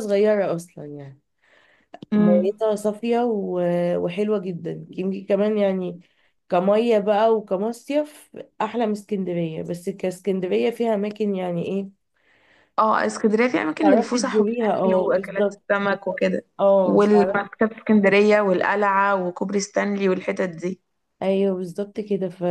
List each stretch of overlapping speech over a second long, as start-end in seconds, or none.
13.8-15.6